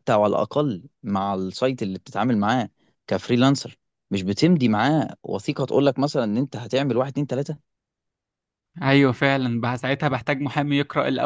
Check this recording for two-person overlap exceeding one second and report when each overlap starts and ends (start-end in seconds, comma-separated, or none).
none